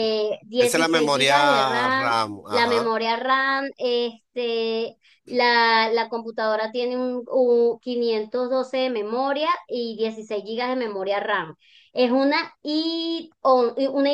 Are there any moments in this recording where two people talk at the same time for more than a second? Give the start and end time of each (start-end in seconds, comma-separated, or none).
0.6-2.9